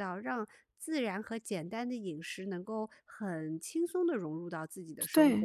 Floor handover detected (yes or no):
yes